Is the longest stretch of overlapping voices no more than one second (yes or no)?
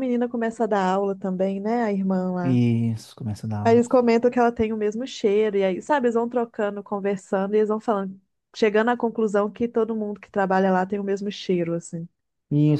yes